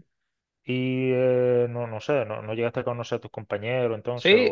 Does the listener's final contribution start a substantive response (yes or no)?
yes